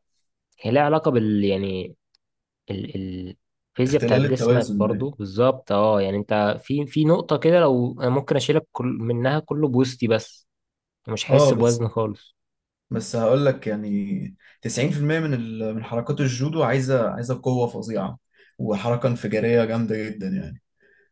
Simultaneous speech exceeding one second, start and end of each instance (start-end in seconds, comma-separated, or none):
3.8-5.1